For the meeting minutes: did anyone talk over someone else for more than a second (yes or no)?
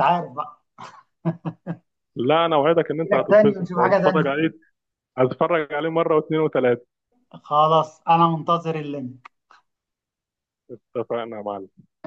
yes